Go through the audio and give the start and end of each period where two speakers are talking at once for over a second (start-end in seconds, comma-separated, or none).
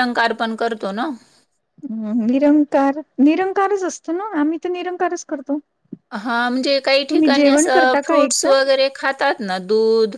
7.1-8.5